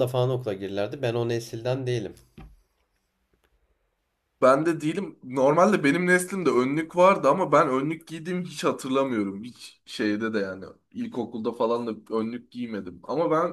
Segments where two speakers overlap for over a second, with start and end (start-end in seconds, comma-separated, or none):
none